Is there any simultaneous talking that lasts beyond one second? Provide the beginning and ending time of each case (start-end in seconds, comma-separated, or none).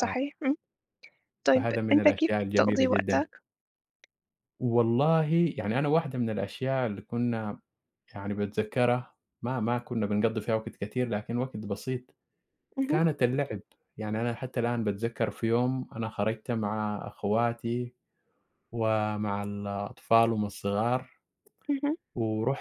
1.6-3.2